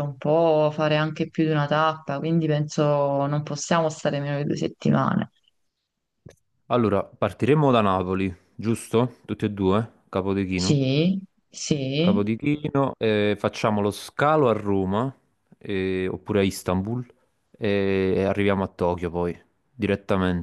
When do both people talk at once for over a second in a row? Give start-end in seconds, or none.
none